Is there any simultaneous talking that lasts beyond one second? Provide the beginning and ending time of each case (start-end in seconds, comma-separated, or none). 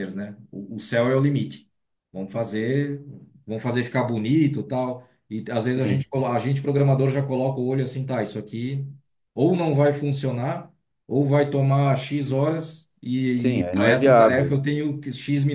13.4-14.6